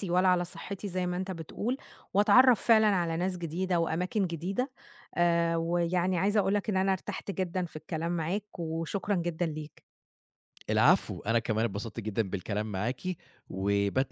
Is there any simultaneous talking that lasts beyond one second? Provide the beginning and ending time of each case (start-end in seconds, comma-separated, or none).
none